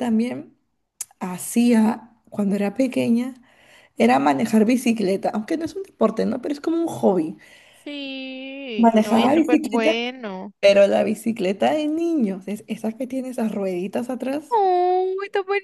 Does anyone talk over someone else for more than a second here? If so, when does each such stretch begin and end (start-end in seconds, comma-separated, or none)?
8.8-10.0